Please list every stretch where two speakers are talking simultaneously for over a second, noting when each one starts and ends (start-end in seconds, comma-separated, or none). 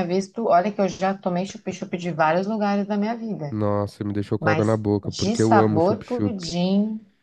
4.4-6.6